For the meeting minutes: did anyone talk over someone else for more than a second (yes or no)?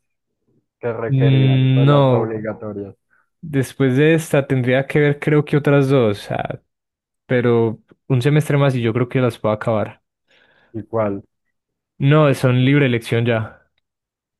yes